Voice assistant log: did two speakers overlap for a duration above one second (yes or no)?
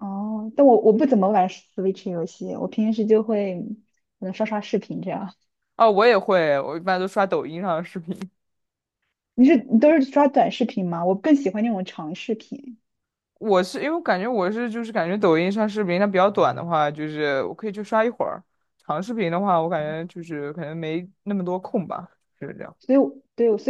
no